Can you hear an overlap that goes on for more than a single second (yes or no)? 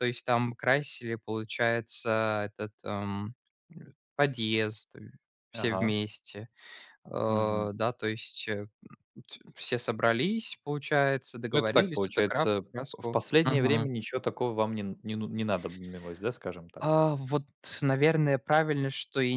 yes